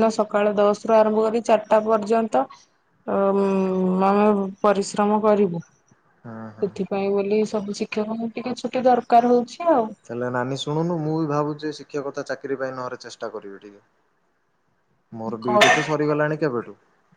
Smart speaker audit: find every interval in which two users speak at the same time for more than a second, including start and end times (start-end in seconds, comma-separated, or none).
none